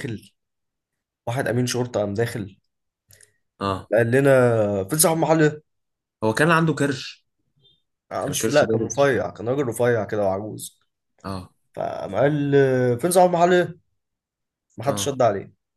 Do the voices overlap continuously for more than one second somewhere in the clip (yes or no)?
yes